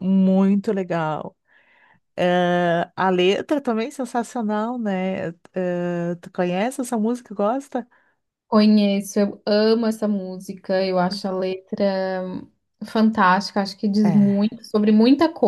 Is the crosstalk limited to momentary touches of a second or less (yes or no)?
yes